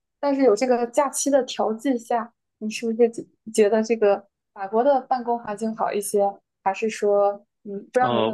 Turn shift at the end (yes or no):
yes